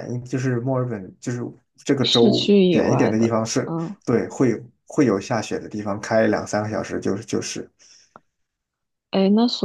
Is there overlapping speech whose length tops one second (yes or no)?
yes